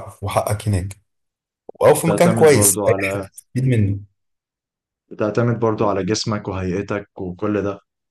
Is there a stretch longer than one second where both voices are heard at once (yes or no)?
yes